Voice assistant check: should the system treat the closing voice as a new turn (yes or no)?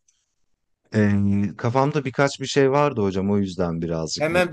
yes